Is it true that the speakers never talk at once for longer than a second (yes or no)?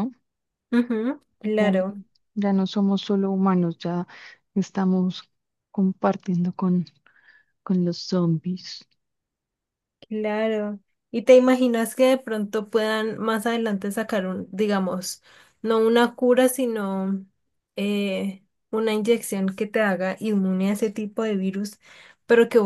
yes